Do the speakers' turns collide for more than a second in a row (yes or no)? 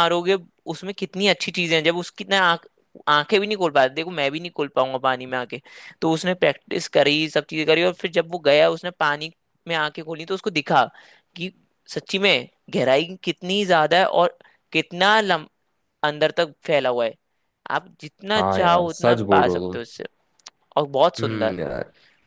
yes